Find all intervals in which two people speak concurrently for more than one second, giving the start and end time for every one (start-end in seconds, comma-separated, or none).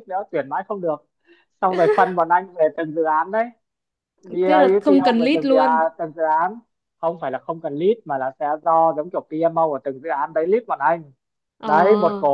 4.4-5.9